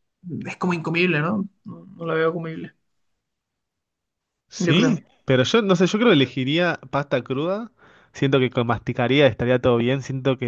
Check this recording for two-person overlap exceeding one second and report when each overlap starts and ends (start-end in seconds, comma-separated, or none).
none